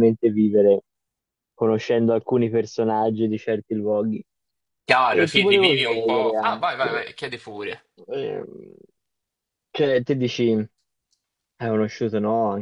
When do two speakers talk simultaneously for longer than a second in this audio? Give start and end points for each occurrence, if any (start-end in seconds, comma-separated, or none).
5.1-7.1